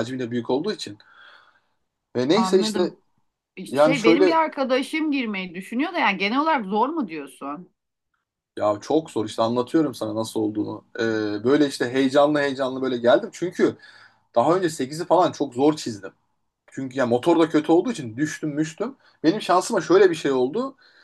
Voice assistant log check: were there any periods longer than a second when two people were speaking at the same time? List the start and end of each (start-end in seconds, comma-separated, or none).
none